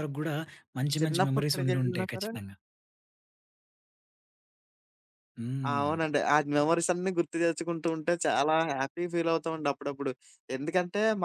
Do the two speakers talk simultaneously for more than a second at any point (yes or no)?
yes